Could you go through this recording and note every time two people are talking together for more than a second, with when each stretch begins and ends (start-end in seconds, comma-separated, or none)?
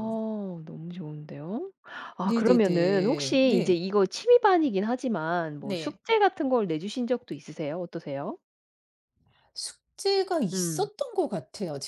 2.2-3.8